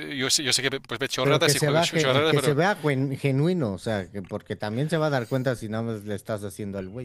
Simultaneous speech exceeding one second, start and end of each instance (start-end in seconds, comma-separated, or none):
1.2-2.5